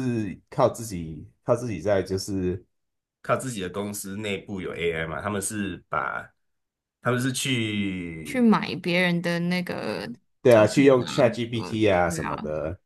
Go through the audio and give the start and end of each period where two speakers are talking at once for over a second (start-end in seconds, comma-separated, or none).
10.5-12.4